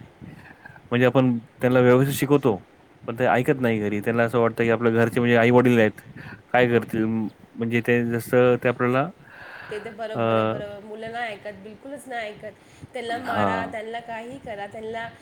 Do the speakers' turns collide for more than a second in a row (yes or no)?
no